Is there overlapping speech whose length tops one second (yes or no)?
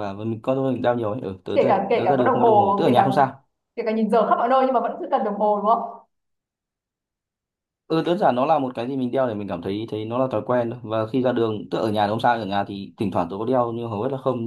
yes